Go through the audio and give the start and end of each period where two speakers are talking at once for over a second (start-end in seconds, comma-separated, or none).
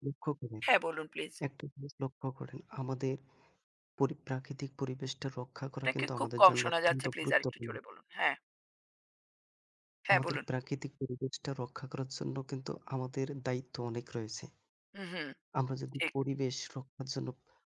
5.8-7.7